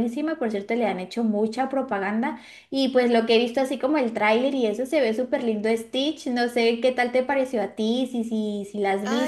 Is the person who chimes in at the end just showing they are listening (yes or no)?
no